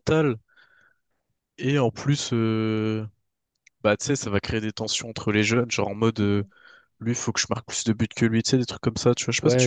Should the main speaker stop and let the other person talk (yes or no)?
yes